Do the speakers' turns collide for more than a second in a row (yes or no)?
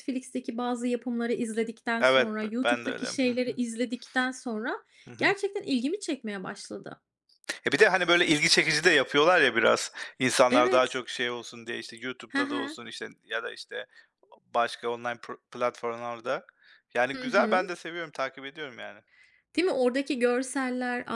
yes